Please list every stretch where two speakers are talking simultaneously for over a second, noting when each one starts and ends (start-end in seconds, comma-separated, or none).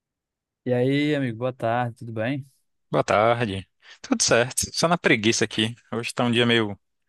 none